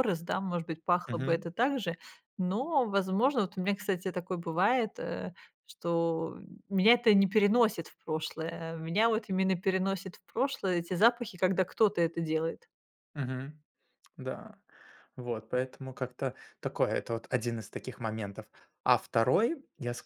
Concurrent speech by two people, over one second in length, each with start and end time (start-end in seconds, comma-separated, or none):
none